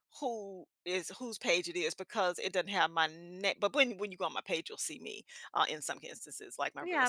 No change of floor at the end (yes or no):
no